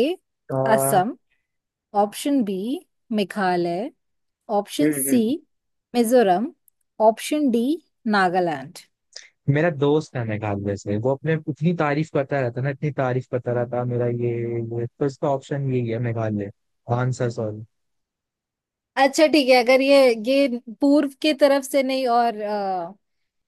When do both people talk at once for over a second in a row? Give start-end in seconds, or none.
none